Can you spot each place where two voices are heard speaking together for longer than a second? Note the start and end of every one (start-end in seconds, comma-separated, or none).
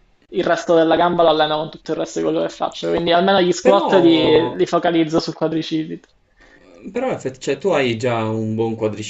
none